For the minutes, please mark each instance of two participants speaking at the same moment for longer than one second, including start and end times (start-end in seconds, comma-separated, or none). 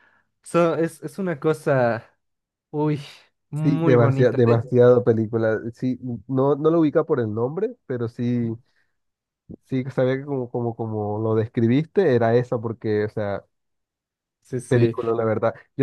3.5-4.8